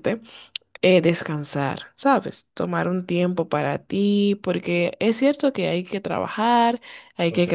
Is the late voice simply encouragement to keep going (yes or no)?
yes